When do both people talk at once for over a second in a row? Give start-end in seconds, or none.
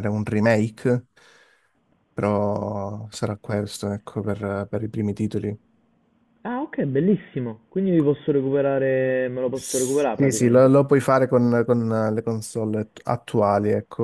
9.5-10.7